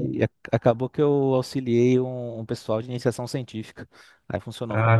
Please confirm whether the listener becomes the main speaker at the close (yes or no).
yes